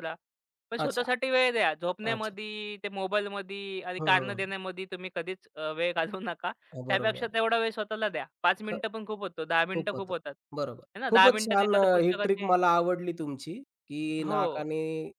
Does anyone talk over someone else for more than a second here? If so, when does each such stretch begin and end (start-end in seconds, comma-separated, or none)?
10.9-12.5